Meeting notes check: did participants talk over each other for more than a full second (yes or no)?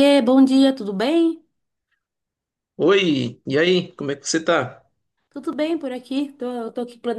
no